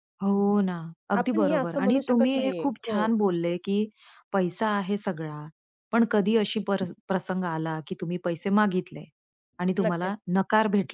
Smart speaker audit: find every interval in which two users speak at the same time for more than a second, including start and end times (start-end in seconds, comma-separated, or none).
1.1-3.1